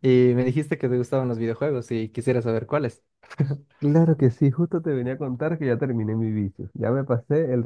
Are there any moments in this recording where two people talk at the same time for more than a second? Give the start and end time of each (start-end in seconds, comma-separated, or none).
none